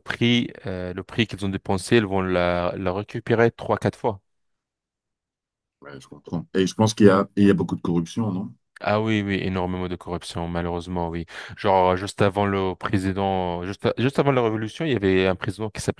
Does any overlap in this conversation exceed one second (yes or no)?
no